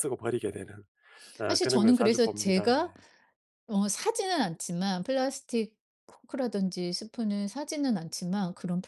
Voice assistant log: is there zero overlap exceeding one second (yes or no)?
no